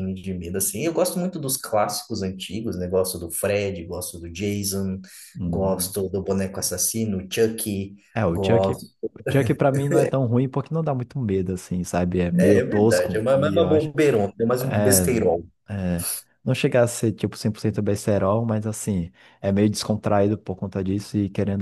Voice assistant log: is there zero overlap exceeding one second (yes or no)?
no